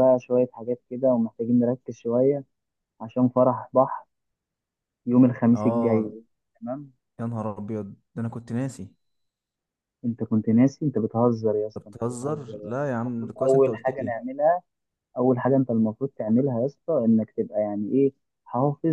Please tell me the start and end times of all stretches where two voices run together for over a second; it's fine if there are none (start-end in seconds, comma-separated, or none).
11.8-14.2